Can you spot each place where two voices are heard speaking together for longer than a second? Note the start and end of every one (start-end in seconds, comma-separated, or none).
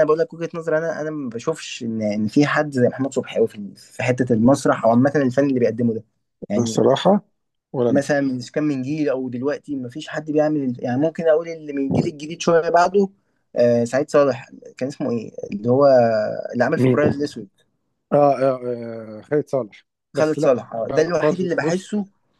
20.1-21.9